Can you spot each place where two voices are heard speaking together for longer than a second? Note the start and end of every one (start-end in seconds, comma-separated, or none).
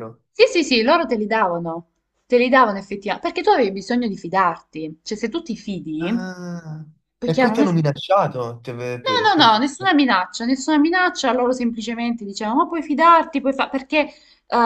none